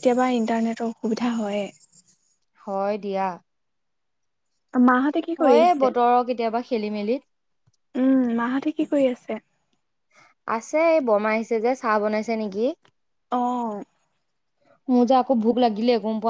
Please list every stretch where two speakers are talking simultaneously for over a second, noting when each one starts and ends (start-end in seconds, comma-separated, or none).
none